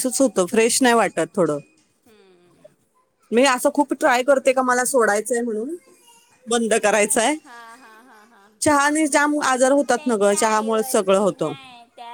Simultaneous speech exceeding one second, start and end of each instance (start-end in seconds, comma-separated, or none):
9.9-11.5